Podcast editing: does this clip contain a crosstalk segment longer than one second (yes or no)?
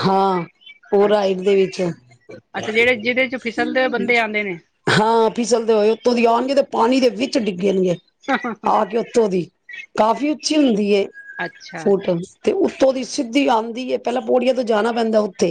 no